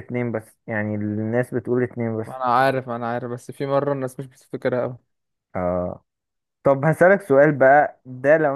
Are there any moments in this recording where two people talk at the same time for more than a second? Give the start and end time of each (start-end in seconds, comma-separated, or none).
none